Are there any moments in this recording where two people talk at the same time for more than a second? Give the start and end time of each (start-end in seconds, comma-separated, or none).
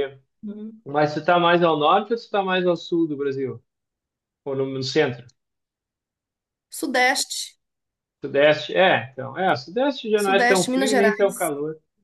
10.2-11.4